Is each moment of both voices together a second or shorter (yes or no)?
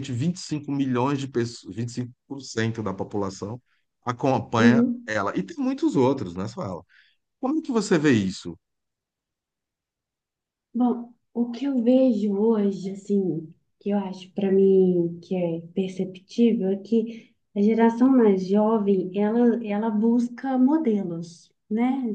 yes